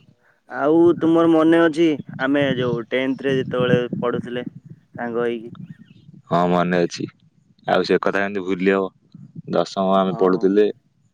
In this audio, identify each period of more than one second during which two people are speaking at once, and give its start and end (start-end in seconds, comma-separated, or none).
none